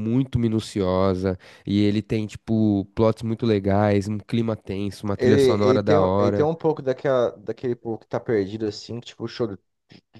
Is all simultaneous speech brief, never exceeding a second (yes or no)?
no